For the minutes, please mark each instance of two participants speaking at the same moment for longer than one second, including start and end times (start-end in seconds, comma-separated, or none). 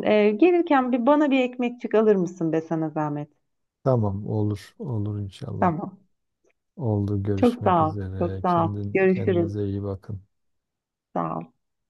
7.4-9.5